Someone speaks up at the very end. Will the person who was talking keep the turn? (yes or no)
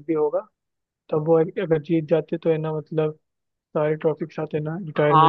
no